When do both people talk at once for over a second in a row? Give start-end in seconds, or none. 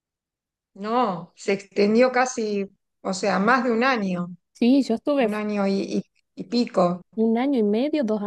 none